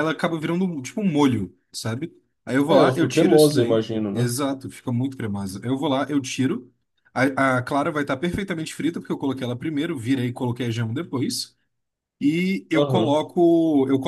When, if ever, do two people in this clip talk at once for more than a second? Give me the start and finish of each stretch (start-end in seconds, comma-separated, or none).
2.7-4.3